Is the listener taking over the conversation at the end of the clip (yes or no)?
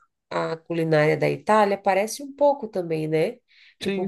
yes